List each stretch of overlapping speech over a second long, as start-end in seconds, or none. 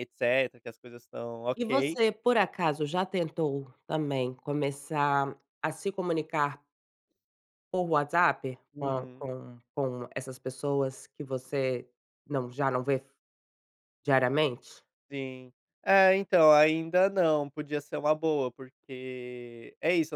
none